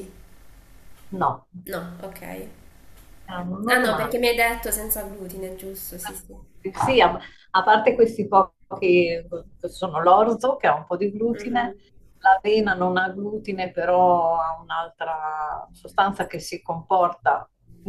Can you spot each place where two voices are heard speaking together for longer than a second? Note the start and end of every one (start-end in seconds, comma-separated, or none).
none